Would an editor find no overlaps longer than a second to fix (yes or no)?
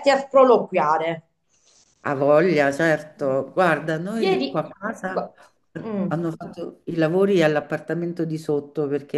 yes